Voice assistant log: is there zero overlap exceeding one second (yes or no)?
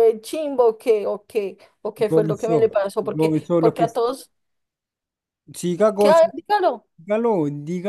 no